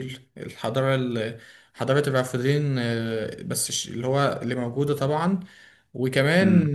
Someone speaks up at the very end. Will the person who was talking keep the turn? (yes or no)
yes